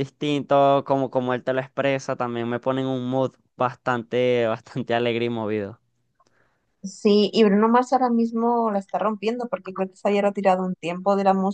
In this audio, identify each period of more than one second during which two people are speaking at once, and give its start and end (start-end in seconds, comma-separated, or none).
none